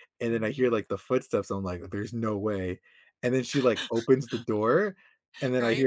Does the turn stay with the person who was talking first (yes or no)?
yes